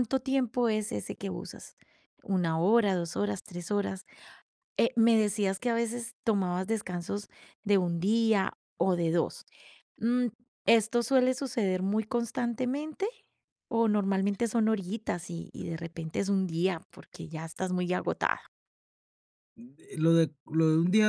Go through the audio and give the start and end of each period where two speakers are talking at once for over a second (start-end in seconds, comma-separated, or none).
none